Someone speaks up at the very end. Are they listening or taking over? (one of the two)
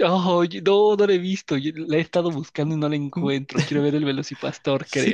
taking over